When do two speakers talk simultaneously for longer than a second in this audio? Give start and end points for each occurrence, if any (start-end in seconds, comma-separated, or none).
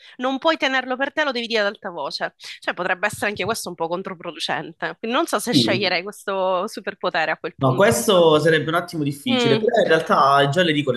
none